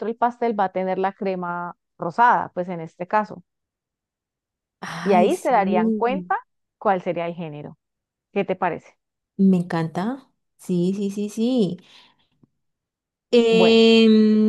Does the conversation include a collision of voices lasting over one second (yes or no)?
yes